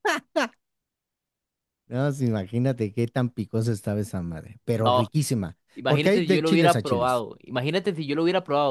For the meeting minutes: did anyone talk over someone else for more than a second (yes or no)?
yes